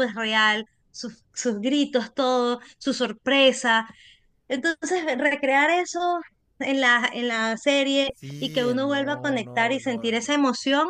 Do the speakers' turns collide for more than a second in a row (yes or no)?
yes